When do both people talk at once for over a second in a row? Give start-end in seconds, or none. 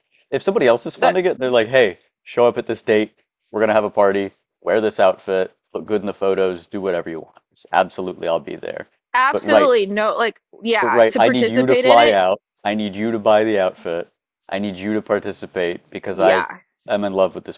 10.8-12.2